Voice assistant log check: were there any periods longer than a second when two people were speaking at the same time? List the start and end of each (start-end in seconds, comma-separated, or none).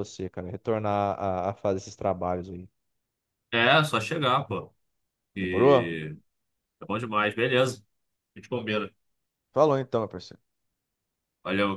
none